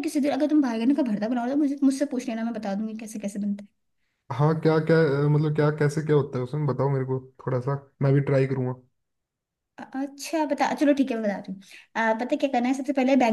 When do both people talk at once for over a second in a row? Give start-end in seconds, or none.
none